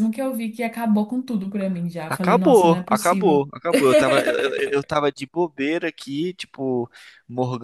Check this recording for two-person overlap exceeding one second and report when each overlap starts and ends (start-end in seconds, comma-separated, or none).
2.1-3.5